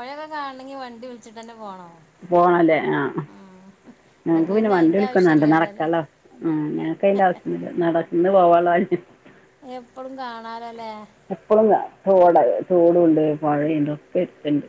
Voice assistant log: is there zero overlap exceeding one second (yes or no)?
no